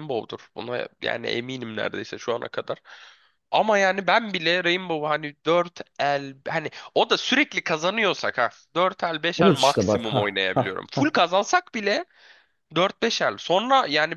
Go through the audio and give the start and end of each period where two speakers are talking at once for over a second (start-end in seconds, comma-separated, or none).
9.4-11.1